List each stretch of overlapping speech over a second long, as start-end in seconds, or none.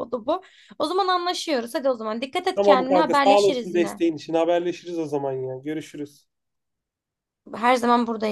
2.5-4.0